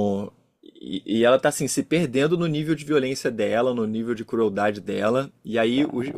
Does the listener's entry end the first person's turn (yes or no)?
no